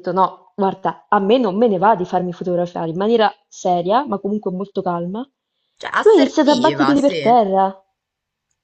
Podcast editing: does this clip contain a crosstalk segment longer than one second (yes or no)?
yes